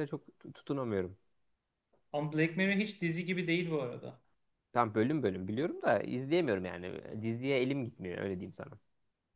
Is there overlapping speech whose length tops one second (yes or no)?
no